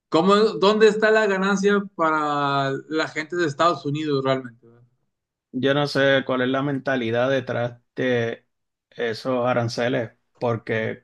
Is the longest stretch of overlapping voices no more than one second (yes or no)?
yes